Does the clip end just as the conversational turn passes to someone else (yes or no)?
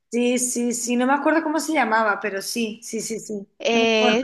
yes